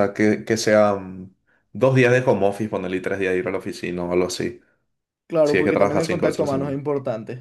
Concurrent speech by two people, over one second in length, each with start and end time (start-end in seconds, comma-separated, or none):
5.4-6.8